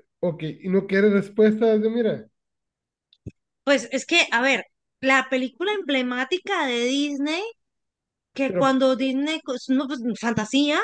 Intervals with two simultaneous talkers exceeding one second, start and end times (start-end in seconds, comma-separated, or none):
none